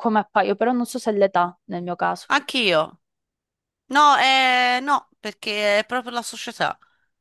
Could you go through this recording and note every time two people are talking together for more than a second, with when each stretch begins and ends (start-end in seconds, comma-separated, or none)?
none